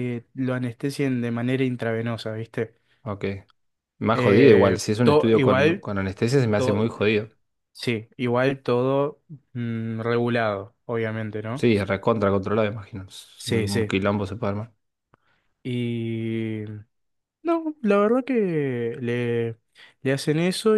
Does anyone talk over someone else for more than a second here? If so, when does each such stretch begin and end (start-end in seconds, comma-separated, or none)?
4.1-5.9